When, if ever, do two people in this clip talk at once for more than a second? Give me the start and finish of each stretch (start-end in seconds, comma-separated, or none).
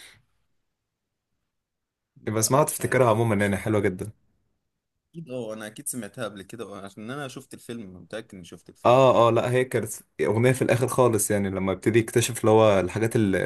2.4-3.9